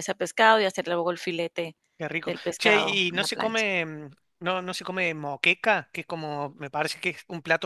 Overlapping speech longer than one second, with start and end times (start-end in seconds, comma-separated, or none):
2.3-3.6